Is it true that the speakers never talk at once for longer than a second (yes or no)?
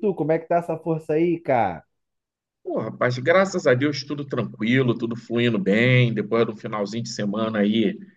yes